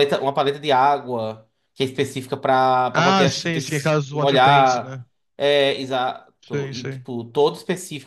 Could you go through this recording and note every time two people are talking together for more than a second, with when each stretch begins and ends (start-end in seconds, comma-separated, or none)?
2.9-5.0